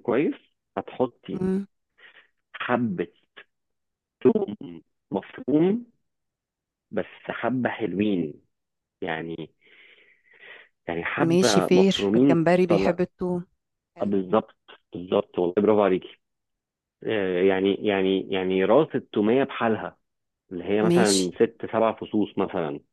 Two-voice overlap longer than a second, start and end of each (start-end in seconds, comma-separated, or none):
11.2-13.0